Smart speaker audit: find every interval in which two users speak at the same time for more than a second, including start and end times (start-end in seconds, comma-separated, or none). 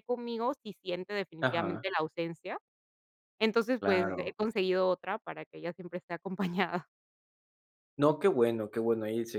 none